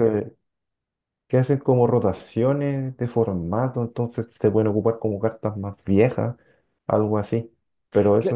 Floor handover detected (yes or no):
no